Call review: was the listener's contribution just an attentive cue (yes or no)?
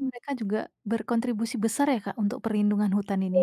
no